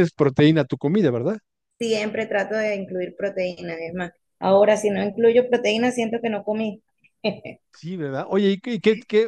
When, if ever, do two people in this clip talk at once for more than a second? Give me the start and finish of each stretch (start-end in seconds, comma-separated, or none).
none